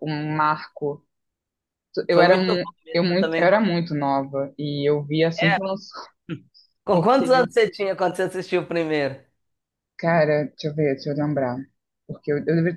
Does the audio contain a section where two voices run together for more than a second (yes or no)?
yes